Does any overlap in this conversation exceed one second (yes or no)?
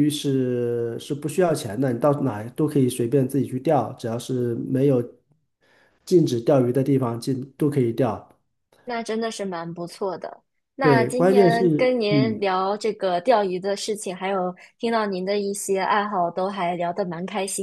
yes